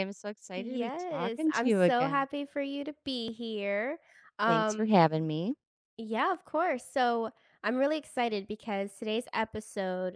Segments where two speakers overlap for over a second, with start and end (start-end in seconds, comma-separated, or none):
0.6-2.3